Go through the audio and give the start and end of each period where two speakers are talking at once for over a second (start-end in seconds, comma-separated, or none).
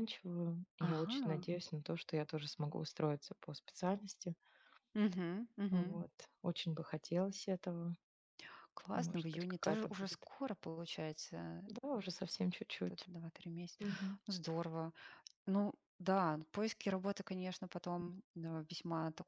8.9-10.3